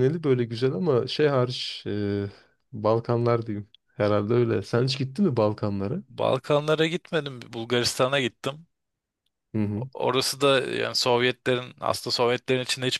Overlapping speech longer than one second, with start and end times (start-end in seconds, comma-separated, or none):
none